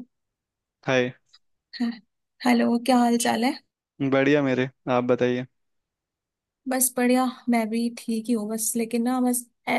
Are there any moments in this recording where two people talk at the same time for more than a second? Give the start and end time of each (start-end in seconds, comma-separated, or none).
none